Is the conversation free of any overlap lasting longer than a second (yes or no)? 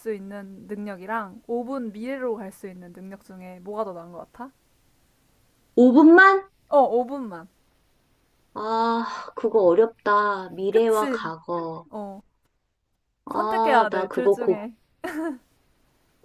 no